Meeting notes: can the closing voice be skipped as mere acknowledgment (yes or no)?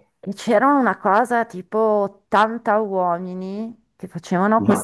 yes